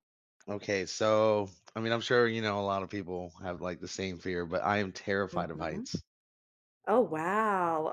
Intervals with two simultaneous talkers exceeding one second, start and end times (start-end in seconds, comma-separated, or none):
none